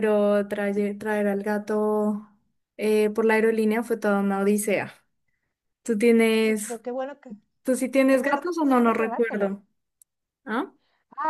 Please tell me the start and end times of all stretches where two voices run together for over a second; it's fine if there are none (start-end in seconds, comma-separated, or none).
8.1-9.5